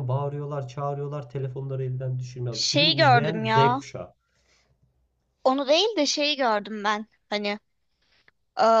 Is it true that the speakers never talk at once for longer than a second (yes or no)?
no